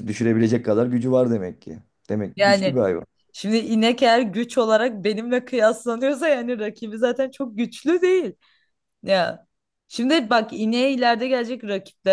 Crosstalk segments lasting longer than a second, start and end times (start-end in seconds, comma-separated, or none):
none